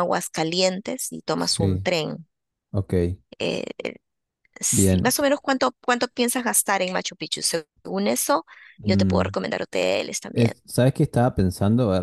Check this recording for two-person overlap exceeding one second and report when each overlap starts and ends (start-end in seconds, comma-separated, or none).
none